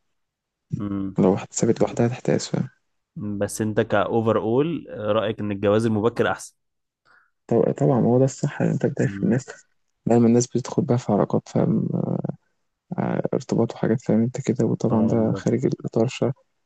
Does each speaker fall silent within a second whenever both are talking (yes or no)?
yes